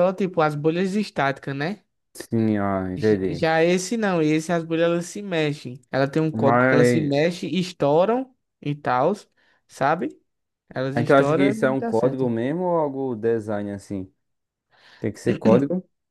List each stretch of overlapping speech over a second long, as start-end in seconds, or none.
10.9-12.3